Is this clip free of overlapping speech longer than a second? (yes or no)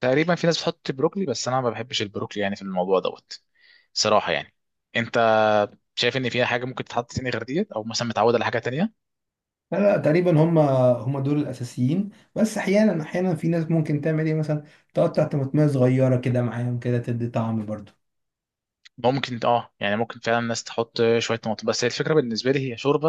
yes